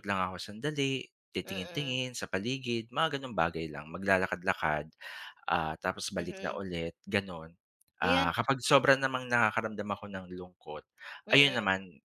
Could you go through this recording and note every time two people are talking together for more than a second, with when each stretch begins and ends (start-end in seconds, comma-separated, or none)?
none